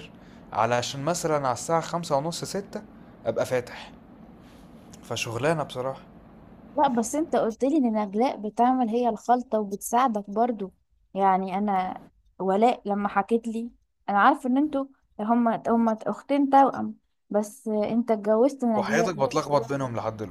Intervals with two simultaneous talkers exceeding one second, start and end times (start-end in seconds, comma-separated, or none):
none